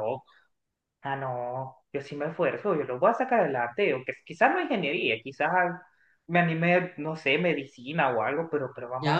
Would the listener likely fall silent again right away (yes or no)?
no